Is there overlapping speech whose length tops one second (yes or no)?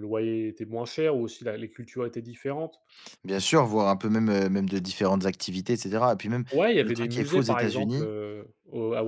yes